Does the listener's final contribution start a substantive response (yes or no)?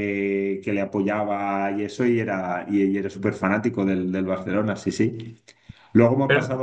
no